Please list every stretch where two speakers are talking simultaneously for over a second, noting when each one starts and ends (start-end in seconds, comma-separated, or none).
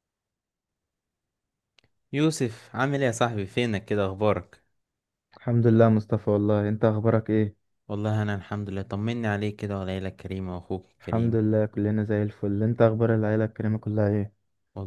none